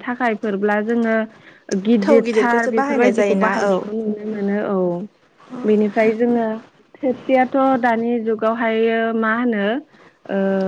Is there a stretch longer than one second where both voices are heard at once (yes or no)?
yes